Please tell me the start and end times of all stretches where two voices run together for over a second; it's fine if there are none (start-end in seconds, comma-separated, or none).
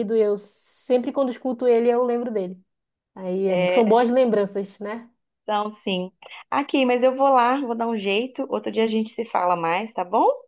none